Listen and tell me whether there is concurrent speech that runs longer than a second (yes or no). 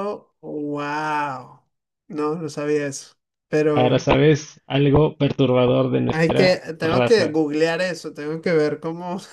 yes